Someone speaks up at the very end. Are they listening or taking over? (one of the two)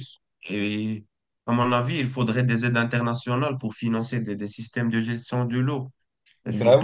listening